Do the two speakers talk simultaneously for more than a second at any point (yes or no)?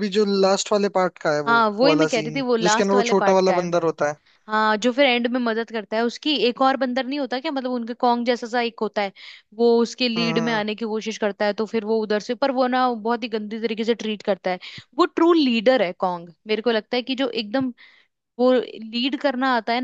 yes